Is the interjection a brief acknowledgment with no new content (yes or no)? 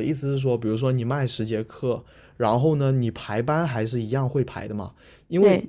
yes